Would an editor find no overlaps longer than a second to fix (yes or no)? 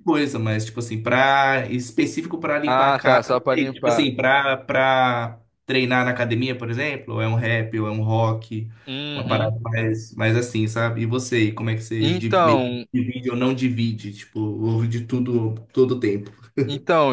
no